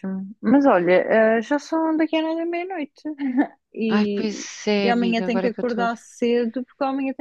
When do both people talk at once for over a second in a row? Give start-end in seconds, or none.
3.9-6.0